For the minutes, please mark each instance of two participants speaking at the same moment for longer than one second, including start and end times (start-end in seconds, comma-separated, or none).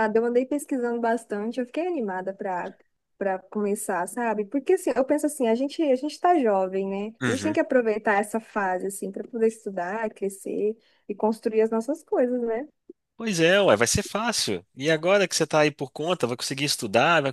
none